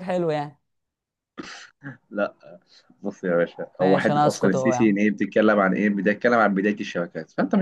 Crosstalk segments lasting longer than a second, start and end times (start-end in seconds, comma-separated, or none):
3.8-5.0